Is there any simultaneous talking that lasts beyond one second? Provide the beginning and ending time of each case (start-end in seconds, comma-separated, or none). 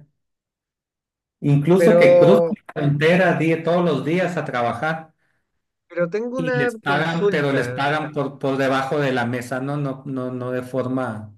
6.4-7.8